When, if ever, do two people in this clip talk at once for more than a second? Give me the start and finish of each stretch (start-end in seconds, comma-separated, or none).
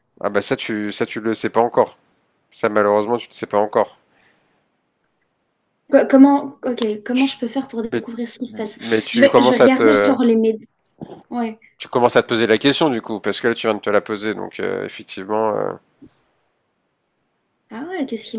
8.5-10.2